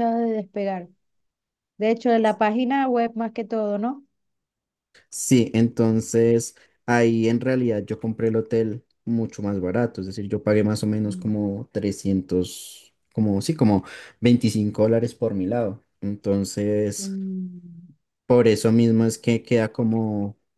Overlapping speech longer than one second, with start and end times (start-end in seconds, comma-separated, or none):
none